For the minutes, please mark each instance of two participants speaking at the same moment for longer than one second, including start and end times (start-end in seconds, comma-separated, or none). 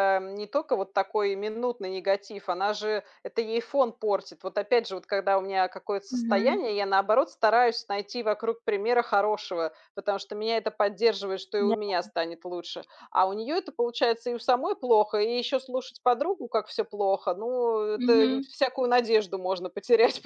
none